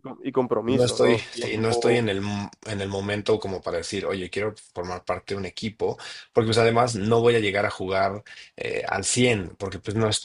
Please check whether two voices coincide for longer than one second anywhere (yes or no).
yes